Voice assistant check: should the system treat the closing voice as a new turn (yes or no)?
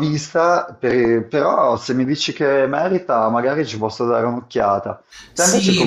yes